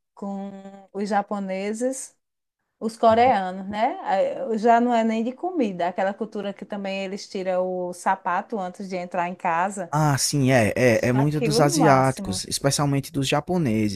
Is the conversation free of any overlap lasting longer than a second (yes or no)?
no